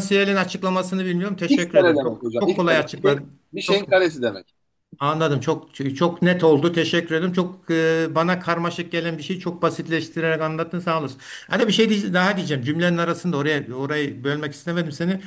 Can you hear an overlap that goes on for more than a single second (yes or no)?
yes